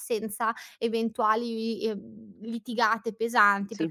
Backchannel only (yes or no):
yes